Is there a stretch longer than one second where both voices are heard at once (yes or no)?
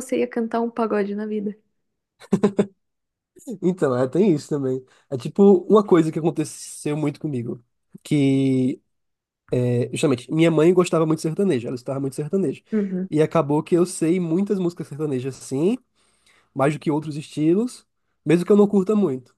no